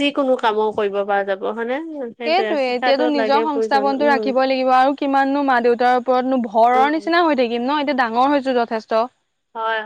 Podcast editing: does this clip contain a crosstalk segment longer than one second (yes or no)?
yes